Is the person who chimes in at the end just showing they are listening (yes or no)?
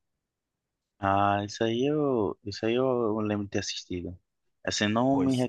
yes